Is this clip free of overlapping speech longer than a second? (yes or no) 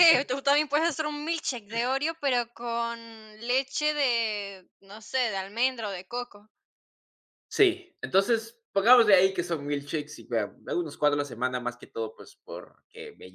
yes